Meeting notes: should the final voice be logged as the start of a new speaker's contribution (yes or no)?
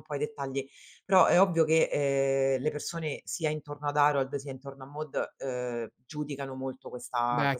yes